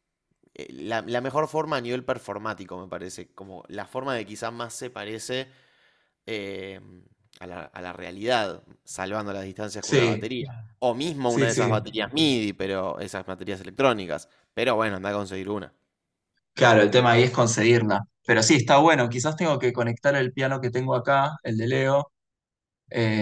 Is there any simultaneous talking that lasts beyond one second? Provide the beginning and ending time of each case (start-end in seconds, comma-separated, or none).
none